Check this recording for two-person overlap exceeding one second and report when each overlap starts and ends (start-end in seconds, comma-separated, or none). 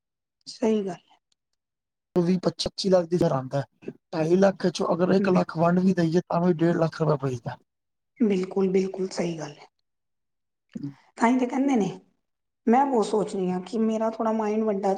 none